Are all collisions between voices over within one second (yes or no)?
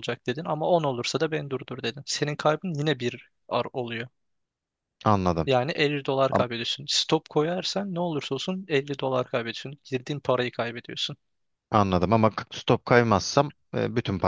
yes